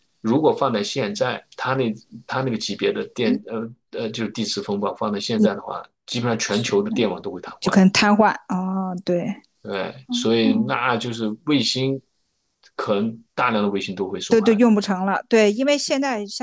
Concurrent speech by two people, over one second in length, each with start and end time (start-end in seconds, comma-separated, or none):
none